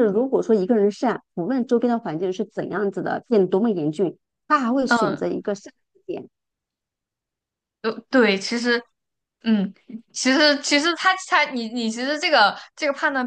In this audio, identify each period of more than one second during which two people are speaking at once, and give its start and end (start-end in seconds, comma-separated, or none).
none